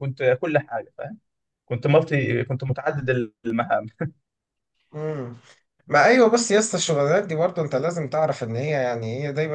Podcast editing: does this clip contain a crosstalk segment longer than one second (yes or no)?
no